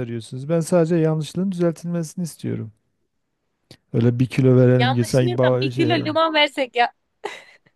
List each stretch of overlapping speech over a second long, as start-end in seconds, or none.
4.8-6.1